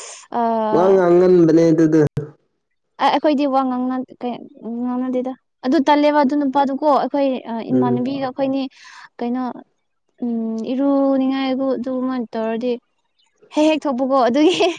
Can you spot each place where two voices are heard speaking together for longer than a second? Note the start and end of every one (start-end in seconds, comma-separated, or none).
none